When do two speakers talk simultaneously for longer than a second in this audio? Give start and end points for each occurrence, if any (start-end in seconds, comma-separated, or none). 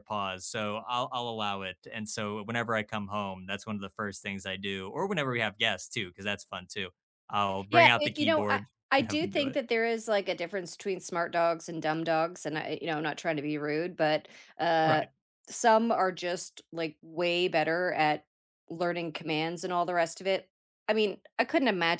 7.7-9.6